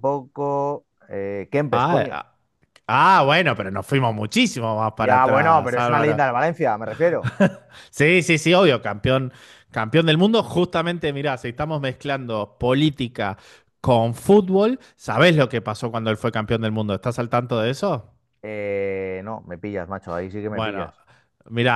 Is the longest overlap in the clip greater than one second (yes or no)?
yes